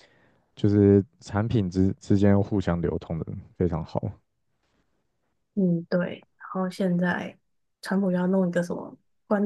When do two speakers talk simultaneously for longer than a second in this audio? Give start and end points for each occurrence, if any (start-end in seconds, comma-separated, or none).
none